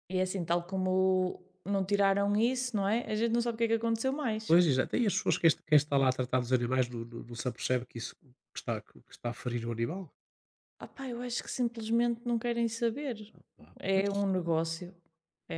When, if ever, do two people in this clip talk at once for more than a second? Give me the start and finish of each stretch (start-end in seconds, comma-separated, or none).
none